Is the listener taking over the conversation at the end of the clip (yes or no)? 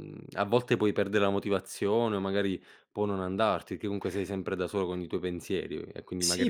yes